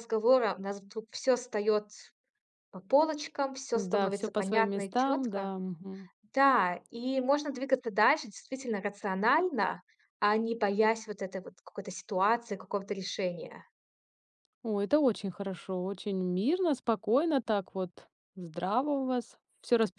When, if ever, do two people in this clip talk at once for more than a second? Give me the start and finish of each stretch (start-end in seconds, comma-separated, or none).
3.7-5.5